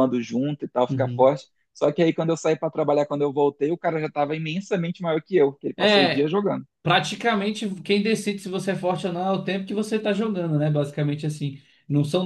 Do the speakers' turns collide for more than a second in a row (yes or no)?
no